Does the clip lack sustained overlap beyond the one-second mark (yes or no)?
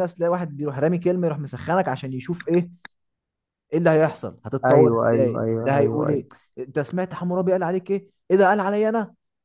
no